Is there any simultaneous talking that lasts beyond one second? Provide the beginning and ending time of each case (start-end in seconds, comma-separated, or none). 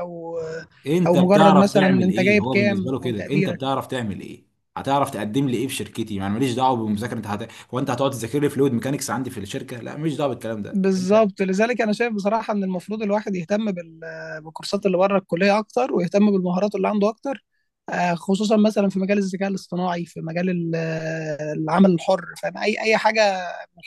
1.1-3.6